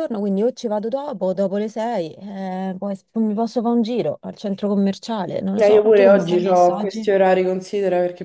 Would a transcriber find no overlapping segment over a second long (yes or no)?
no